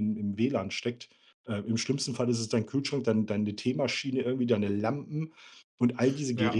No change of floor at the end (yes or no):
yes